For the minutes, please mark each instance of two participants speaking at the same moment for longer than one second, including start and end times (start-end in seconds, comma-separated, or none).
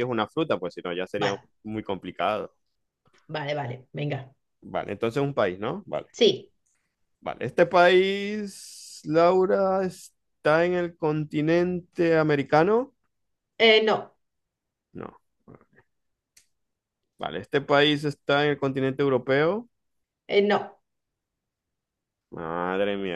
none